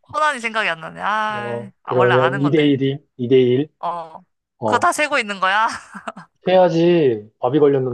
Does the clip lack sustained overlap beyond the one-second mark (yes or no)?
no